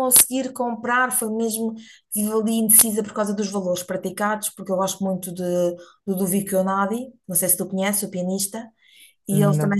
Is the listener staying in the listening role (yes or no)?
yes